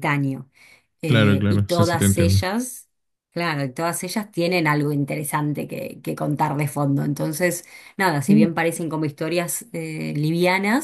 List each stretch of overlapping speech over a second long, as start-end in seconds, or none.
1.1-2.4